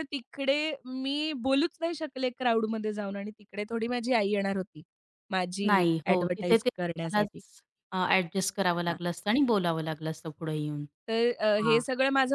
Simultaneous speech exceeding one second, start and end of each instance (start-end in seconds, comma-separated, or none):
5.7-7.4